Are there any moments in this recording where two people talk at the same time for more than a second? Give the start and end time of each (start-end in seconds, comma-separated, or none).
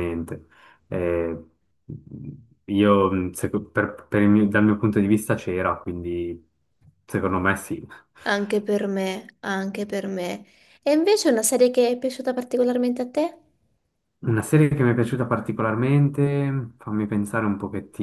none